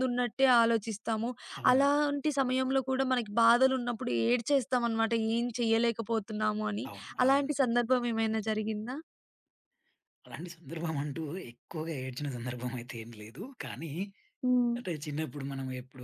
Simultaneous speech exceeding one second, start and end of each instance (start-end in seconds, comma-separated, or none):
none